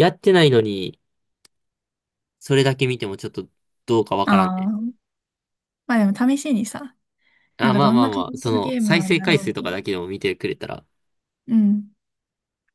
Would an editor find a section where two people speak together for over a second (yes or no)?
yes